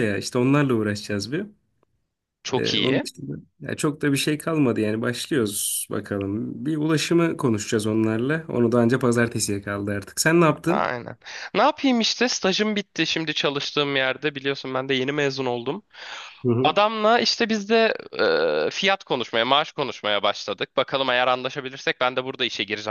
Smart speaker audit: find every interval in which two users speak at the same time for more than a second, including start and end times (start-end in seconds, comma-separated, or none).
none